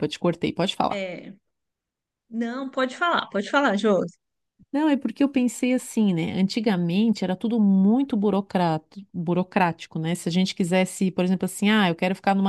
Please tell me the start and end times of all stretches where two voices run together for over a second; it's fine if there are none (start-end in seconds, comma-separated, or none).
none